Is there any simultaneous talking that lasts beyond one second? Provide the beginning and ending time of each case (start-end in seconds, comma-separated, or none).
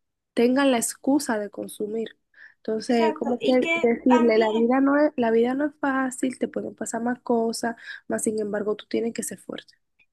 2.9-4.7